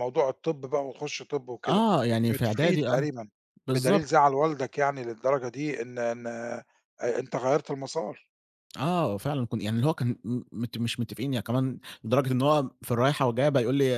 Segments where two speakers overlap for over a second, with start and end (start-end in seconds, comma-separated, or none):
1.7-3.1